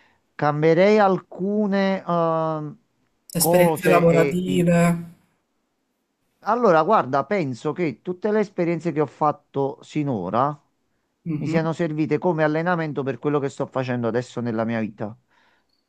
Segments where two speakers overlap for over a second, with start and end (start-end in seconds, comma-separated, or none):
3.4-4.7